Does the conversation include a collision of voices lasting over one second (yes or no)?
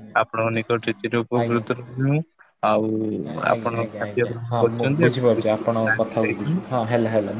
yes